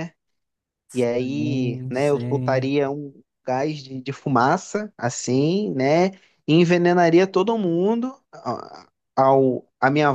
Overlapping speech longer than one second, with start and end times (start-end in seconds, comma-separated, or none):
1.0-2.7